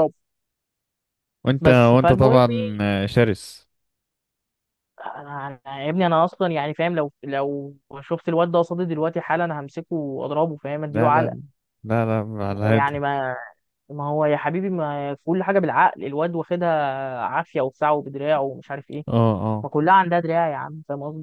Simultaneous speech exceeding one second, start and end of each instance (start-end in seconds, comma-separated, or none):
1.6-2.8